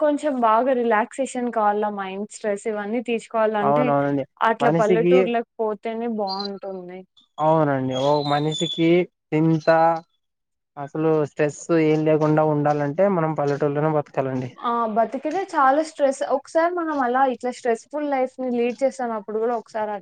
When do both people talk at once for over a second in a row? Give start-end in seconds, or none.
none